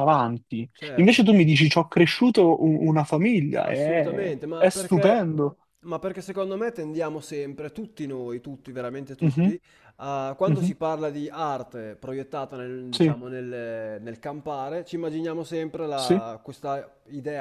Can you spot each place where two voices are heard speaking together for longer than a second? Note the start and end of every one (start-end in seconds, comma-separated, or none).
3.6-5.3